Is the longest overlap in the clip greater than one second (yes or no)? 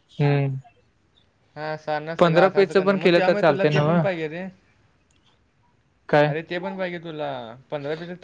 yes